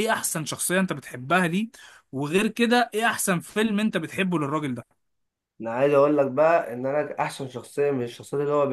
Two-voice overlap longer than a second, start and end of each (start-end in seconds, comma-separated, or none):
none